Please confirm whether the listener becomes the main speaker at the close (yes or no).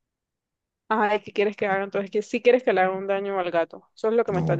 yes